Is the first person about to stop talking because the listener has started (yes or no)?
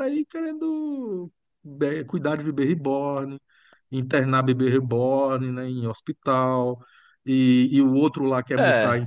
no